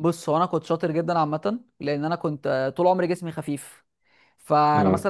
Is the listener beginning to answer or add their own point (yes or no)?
no